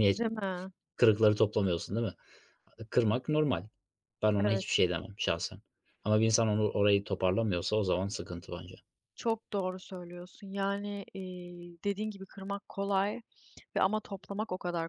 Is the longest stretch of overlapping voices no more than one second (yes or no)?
yes